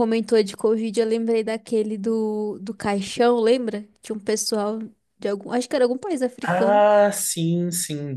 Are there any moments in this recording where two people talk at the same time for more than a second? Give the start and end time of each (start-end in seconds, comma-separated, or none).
none